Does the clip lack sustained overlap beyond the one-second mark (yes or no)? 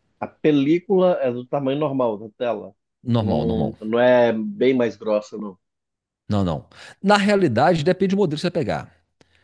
yes